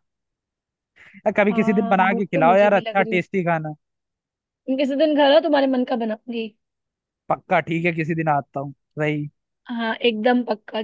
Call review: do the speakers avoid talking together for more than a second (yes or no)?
no